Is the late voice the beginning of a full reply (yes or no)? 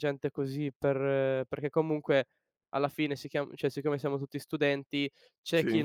no